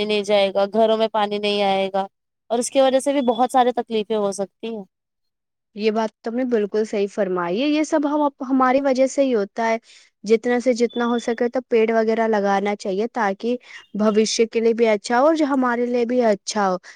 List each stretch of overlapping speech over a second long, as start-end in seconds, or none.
none